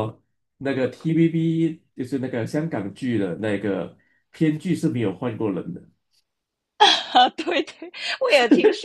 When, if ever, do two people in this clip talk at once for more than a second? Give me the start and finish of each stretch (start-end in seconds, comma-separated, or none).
none